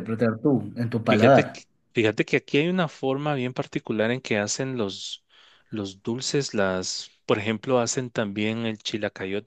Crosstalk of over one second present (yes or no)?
no